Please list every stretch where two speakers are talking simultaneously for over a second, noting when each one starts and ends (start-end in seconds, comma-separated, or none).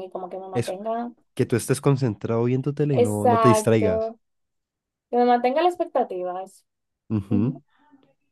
2.9-4.1